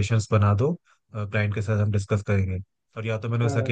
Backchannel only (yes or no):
yes